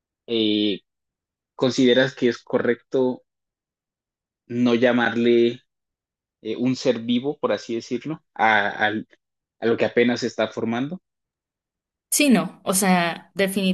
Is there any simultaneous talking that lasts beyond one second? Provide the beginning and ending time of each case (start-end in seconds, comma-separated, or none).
none